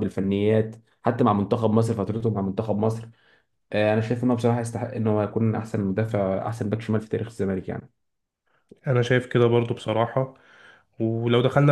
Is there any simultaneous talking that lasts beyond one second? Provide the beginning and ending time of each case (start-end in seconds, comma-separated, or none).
none